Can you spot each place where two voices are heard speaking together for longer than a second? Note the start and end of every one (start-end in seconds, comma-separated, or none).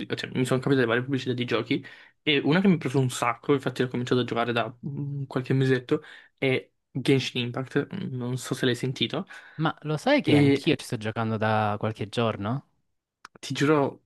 none